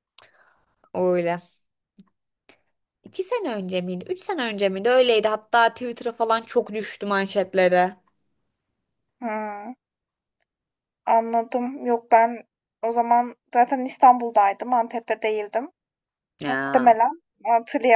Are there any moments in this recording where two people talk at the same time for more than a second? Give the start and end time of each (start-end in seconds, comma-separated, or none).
none